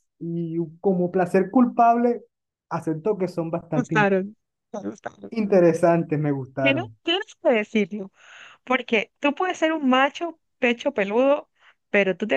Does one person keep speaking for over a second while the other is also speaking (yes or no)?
no